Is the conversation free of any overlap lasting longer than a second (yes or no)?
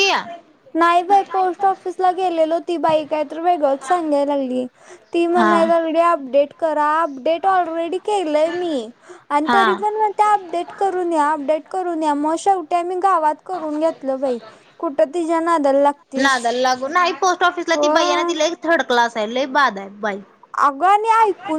yes